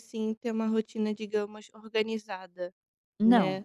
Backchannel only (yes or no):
yes